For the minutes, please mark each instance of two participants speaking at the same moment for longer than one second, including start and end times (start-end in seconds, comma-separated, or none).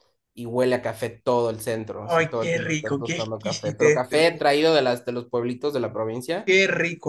2.0-4.5